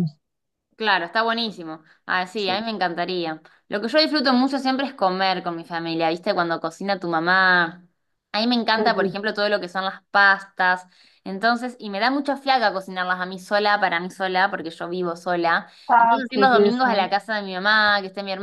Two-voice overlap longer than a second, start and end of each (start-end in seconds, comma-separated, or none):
15.9-17.1